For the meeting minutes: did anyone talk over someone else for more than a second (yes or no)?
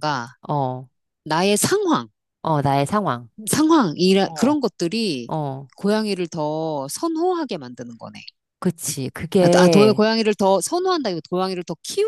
no